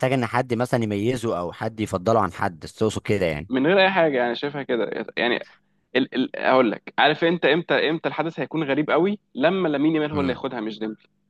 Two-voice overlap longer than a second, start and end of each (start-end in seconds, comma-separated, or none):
none